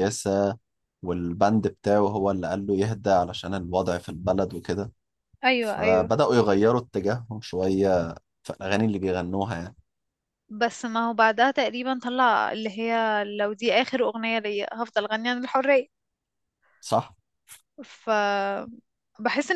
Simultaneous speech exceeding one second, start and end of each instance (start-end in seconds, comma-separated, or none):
none